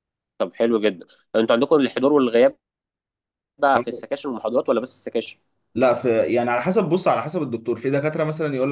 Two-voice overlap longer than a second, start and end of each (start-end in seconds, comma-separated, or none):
none